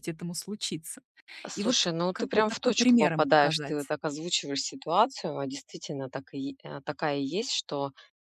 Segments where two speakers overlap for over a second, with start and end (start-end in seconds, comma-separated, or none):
1.5-3.9